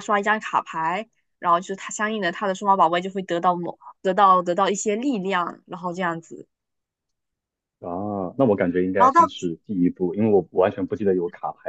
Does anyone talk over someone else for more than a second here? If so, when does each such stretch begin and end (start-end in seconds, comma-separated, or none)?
none